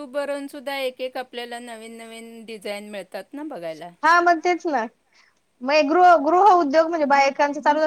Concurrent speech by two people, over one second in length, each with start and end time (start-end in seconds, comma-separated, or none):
none